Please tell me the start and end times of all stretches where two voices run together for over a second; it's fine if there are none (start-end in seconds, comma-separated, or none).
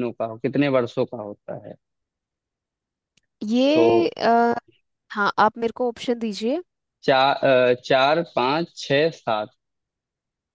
none